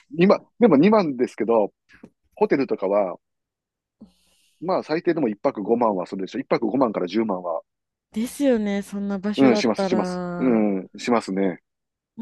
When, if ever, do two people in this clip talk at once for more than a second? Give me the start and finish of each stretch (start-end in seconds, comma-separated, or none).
9.4-10.7